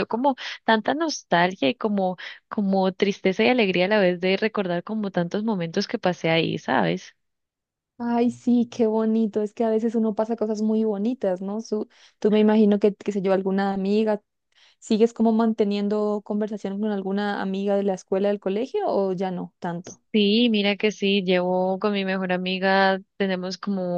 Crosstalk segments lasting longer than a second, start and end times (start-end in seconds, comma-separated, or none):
none